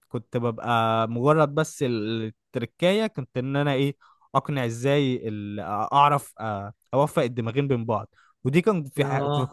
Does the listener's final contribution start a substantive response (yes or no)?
no